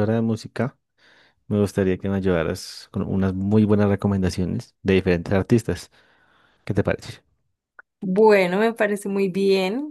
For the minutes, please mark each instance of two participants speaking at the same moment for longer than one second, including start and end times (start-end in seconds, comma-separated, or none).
none